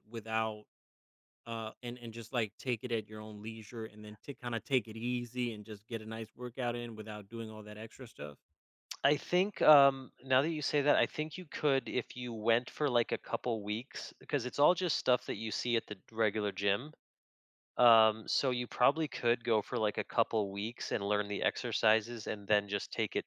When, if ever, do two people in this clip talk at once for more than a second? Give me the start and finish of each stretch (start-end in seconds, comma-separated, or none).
none